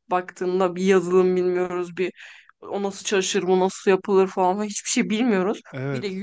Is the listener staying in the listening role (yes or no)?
yes